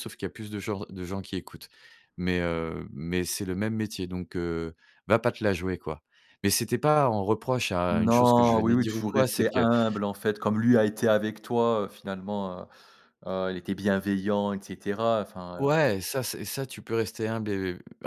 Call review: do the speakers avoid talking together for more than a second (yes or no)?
no